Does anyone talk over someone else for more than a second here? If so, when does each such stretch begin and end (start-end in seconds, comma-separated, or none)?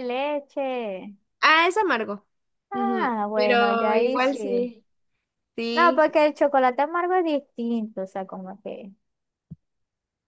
2.7-4.7